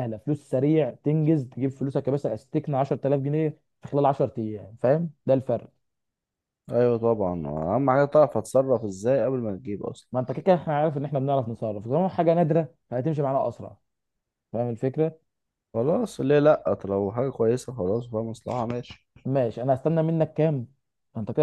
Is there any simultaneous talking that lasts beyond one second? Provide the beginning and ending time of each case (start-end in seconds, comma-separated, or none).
none